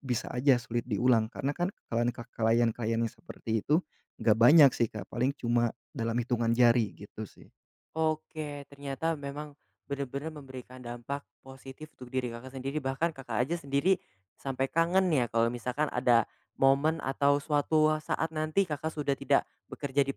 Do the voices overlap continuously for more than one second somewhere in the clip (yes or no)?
no